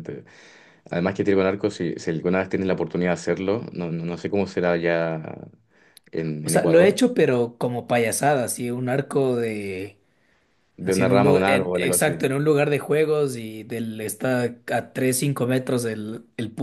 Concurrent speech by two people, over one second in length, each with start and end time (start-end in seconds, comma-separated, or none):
10.8-12.1